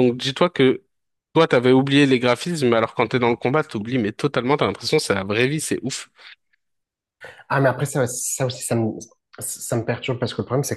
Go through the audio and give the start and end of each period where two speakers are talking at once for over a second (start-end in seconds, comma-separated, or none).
none